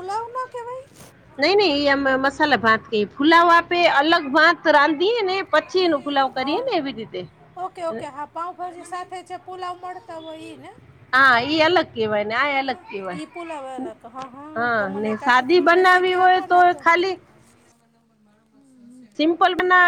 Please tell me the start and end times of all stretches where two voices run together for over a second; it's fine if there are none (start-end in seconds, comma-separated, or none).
14.8-16.6